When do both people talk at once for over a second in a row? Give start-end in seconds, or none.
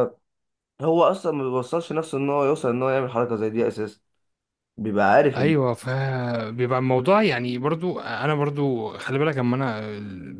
none